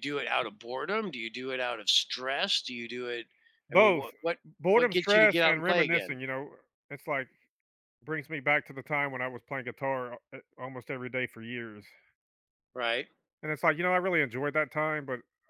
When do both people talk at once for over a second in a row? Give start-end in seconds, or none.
4.7-6.2